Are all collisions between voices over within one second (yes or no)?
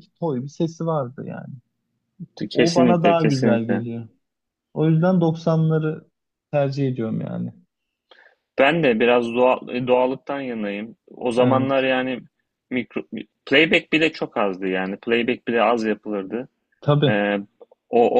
no